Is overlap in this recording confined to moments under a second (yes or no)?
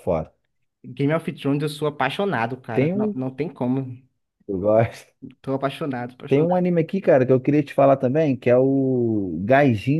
yes